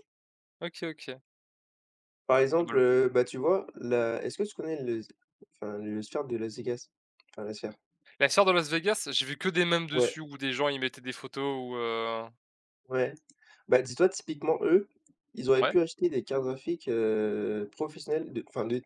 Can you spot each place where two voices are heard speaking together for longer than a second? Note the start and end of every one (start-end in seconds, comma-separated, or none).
none